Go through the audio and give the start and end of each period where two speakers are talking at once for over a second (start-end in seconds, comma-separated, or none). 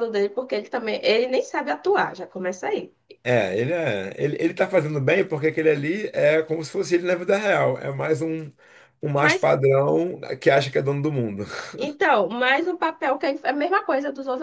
none